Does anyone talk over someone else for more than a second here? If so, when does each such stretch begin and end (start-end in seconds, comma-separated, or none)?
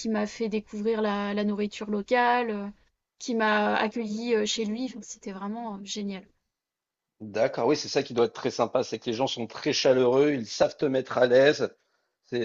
none